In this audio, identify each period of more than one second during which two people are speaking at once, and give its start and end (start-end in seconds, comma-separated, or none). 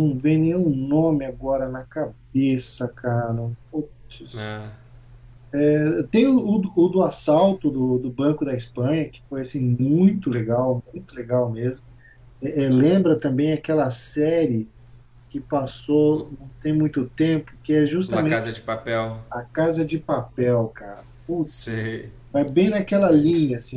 none